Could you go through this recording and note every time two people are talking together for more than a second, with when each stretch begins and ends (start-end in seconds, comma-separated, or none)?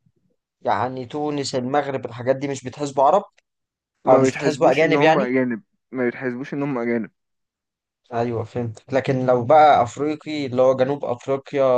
4.1-5.3